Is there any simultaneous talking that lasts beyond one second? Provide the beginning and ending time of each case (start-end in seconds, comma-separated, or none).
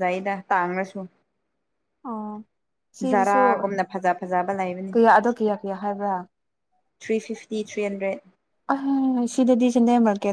none